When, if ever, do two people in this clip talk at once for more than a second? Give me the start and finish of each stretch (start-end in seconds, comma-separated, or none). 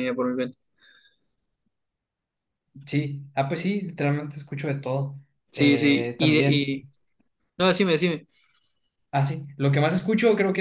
5.5-6.8